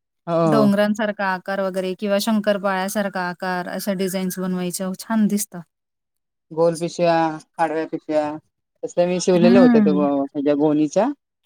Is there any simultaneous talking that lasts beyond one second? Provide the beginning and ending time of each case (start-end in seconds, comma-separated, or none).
none